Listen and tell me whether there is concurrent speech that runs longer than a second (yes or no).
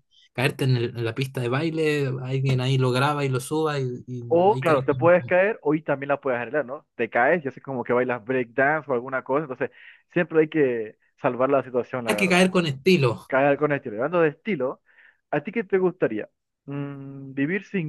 no